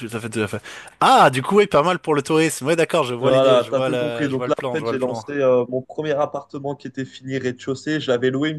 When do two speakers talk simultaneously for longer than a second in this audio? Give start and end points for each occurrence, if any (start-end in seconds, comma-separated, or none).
3.2-5.2